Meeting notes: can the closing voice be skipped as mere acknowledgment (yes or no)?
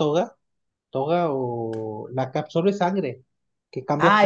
no